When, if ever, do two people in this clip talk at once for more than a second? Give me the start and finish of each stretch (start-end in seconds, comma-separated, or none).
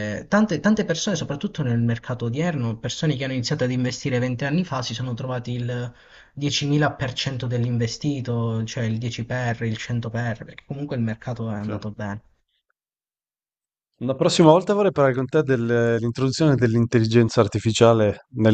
none